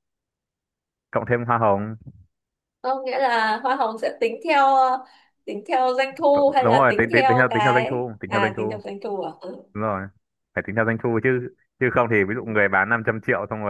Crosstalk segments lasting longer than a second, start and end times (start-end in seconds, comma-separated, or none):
6.3-8.8